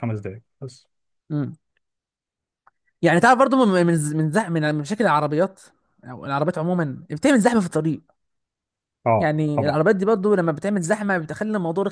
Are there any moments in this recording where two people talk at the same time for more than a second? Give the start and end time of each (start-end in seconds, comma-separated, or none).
none